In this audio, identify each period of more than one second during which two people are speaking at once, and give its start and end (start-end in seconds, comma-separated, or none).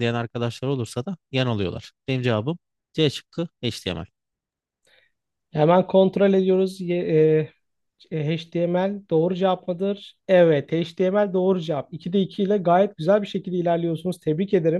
none